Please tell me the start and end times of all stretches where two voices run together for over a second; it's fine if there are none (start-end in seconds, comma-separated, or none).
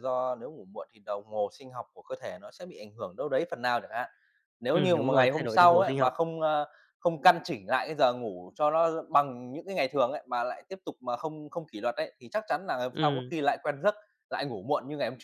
4.7-6.1